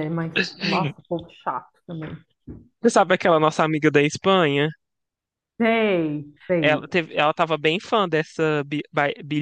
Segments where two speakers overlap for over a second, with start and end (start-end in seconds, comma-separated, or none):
none